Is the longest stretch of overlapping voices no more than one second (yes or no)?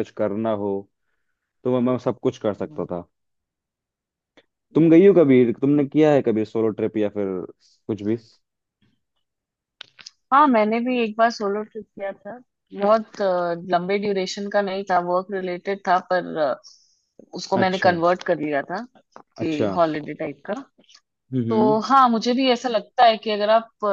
yes